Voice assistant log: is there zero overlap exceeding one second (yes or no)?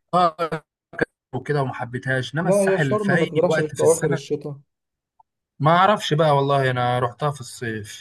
no